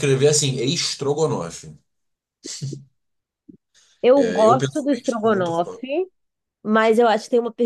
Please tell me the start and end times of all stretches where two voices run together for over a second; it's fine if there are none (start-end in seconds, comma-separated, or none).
4.1-5.8